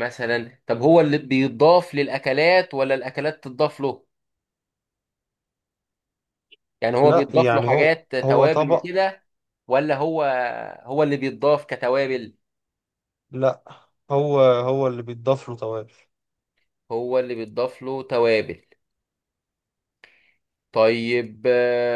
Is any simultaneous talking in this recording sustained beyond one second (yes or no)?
yes